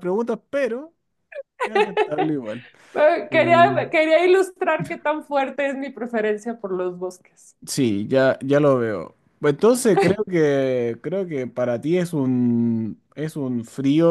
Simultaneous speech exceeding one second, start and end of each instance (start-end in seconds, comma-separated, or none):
none